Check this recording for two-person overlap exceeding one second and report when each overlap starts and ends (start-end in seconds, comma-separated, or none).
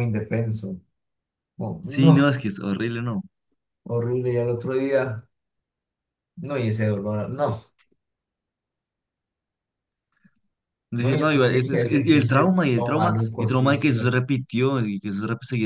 11.0-14.2